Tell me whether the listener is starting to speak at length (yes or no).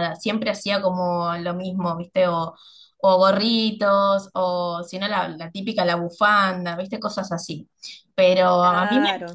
no